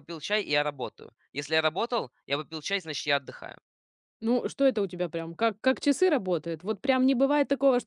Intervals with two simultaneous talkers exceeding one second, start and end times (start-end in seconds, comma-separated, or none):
none